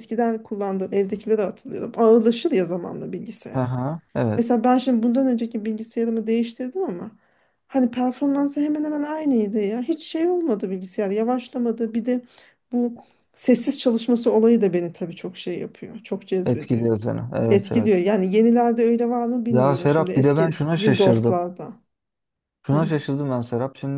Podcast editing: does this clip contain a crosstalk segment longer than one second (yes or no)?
yes